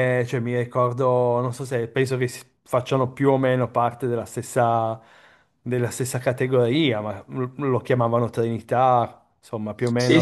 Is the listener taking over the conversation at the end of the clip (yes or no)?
yes